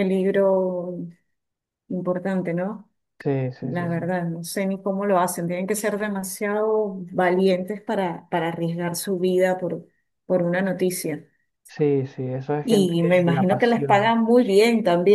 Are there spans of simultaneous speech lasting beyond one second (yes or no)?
yes